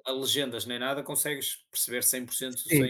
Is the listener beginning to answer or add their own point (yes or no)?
yes